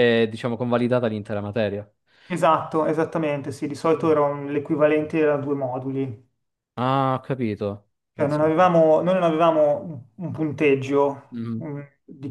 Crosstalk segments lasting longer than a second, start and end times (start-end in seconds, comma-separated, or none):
none